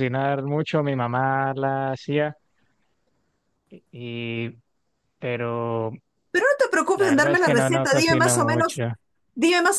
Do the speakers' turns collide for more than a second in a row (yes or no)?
yes